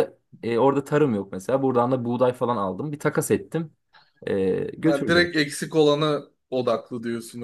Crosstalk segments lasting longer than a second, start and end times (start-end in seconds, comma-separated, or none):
none